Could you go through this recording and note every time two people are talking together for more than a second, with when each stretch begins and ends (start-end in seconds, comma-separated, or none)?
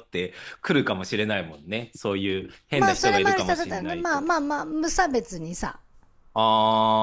2.7-4.3